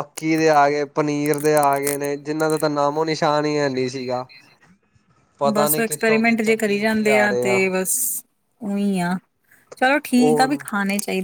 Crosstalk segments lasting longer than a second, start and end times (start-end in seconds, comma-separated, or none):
5.5-7.6